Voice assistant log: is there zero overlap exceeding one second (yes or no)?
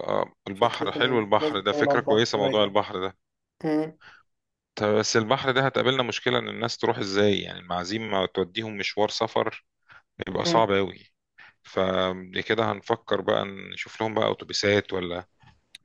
no